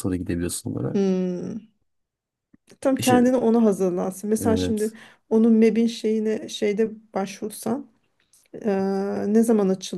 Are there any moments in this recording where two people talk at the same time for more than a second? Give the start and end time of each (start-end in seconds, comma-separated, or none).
none